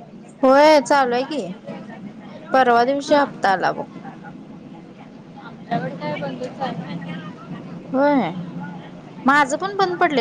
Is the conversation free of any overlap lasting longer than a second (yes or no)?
yes